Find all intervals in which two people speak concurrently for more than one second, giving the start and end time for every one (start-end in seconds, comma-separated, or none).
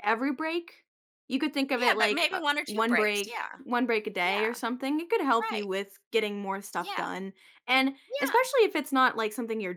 1.8-3.6